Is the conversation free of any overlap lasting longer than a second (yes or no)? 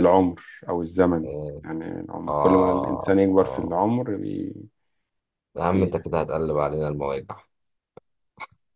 no